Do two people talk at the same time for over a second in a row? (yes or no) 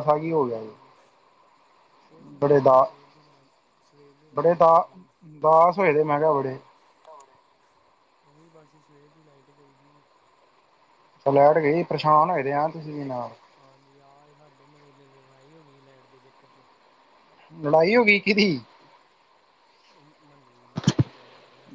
no